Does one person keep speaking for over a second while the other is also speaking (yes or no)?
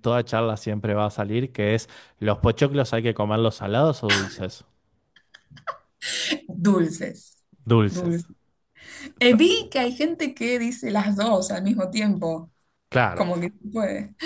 no